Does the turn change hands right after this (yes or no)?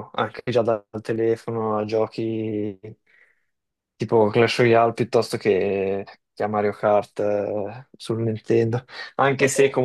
no